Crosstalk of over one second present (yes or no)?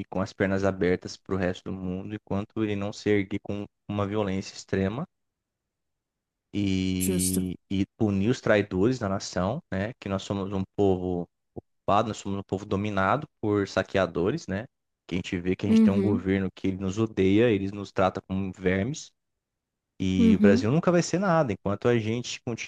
no